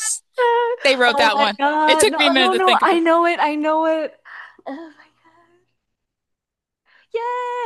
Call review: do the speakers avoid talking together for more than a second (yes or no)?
no